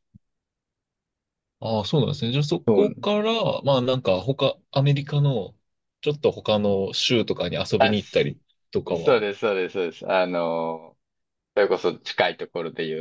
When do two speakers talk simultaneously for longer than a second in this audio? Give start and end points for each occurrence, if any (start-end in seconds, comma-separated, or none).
none